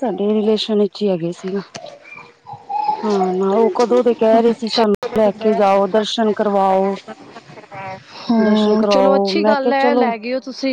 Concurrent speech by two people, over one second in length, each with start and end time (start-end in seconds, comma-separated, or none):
8.4-10.1